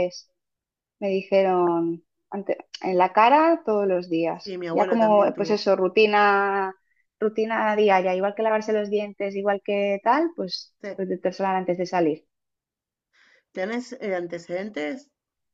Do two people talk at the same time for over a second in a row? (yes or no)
yes